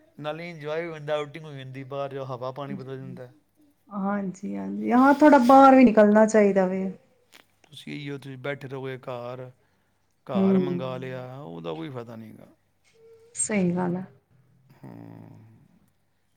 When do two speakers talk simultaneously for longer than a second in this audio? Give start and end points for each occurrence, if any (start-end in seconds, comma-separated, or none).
none